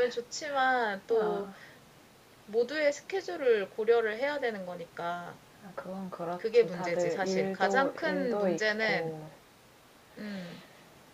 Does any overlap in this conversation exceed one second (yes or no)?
yes